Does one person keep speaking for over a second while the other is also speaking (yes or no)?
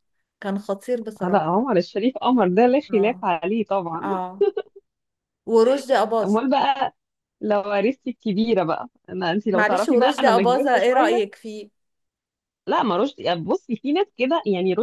yes